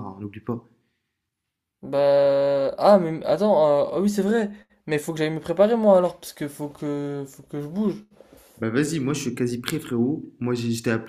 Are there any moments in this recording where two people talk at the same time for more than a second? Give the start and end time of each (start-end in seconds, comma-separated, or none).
none